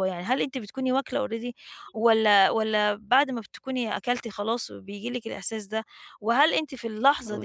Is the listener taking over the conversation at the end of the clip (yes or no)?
no